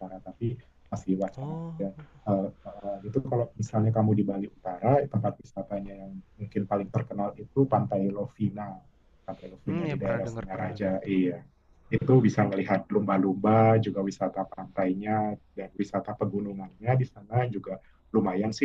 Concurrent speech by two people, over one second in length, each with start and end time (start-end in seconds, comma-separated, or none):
9.7-11.1